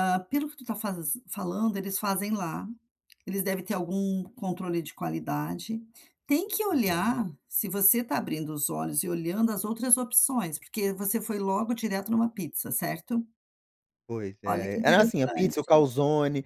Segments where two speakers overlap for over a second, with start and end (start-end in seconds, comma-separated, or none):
14.5-15.7